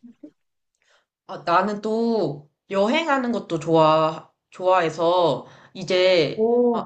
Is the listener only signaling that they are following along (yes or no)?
yes